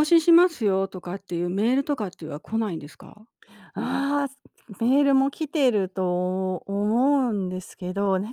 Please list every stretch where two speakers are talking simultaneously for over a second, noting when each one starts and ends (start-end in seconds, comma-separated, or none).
none